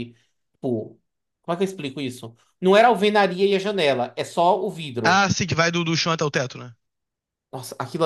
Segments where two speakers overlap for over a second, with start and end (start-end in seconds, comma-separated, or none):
none